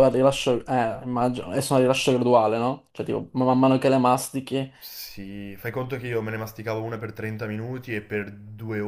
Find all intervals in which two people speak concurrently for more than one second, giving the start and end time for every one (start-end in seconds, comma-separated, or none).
none